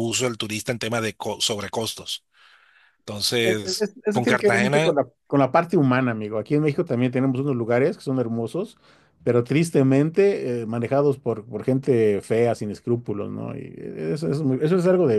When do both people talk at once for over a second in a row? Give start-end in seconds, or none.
3.4-4.9